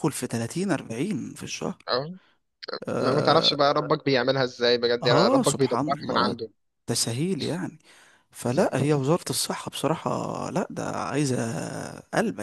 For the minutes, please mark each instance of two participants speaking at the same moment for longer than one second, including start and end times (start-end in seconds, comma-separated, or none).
5.0-6.4